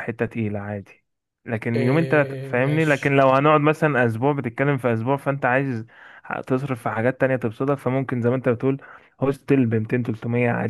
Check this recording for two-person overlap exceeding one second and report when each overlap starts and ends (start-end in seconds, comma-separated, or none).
1.8-3.2